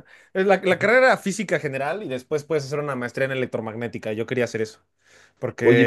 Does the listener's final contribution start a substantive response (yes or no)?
yes